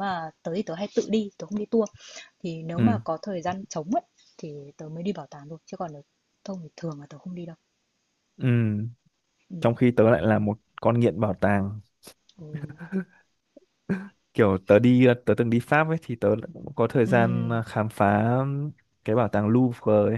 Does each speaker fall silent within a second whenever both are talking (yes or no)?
yes